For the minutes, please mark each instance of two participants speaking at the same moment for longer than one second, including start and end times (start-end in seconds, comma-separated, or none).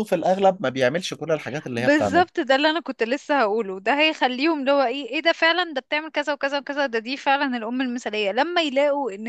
none